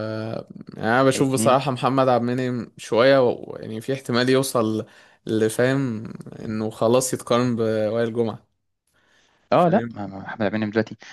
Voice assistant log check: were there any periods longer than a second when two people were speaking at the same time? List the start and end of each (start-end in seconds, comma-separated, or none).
none